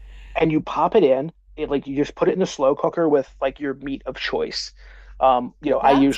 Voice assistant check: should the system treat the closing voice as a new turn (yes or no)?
no